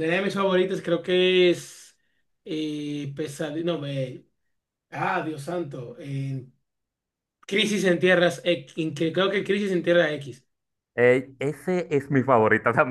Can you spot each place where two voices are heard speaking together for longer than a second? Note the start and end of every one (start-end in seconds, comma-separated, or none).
none